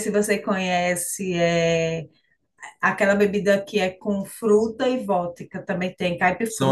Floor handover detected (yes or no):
yes